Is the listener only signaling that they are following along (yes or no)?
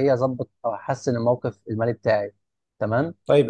no